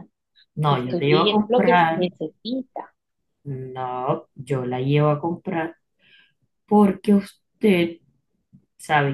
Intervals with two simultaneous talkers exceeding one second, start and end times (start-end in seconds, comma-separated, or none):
0.7-2.1